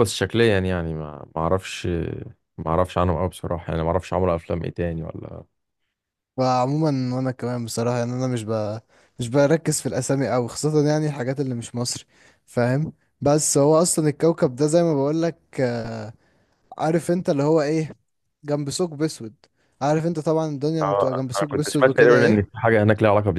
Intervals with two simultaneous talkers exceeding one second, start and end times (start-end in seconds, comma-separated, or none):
20.8-22.6